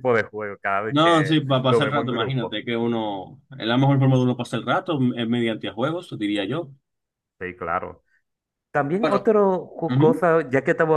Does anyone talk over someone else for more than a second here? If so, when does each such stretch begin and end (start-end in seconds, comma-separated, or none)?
0.9-2.6